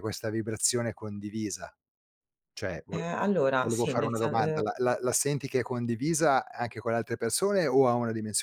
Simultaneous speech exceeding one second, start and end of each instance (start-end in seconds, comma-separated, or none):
2.9-4.6